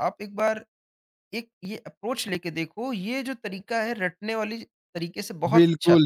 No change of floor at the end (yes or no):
no